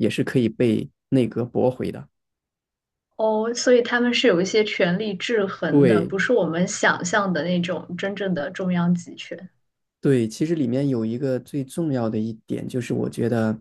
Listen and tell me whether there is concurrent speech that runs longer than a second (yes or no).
no